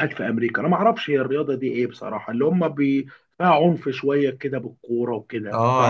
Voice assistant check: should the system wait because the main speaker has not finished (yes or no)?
no